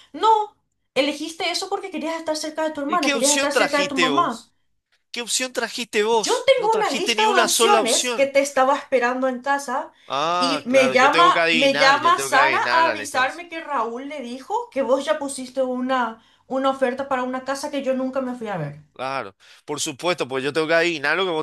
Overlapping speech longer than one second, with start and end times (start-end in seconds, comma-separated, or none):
2.9-4.5, 6.2-8.3, 10.4-13.4